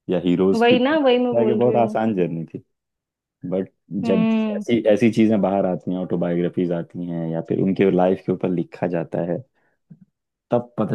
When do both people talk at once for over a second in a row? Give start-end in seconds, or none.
0.6-1.9